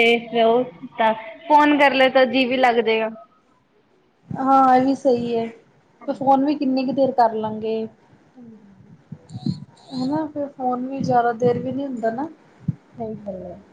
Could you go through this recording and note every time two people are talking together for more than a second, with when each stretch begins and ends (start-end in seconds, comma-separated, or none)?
none